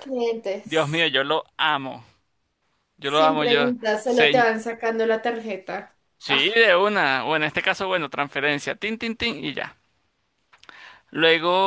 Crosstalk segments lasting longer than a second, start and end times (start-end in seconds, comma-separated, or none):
3.0-4.5